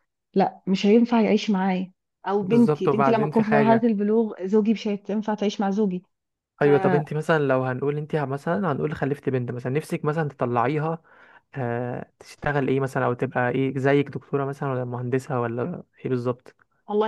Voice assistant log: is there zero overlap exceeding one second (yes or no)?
no